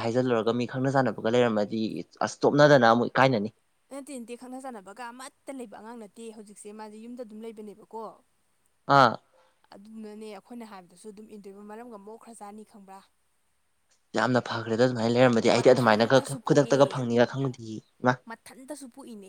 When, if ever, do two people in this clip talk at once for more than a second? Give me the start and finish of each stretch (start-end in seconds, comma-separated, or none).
15.5-17.0